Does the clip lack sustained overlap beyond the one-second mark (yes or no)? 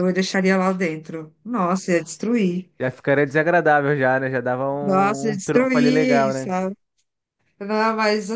no